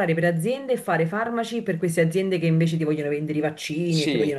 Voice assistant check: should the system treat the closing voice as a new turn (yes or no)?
no